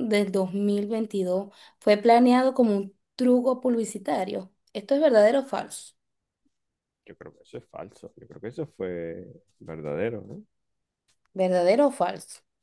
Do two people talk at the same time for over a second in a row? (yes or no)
no